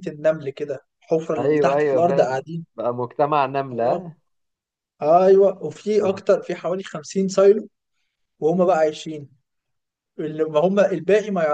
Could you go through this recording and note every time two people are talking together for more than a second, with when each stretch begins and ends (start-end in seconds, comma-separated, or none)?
1.4-2.6